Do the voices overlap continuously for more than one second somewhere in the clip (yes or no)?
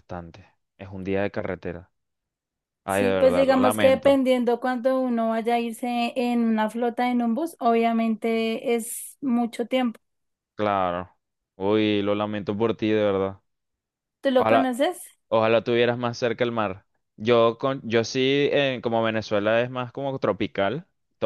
yes